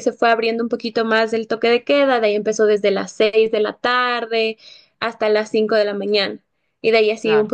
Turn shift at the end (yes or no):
no